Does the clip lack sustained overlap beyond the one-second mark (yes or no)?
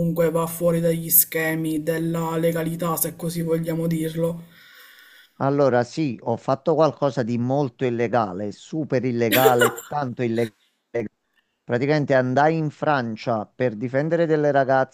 yes